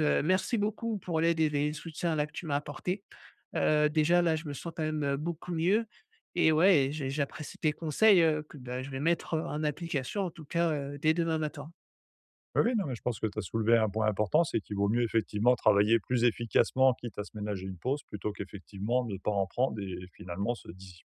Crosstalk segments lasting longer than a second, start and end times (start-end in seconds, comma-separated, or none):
none